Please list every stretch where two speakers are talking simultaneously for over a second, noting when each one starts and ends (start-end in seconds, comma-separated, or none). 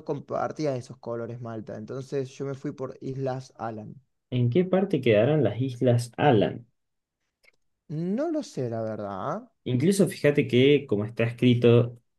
none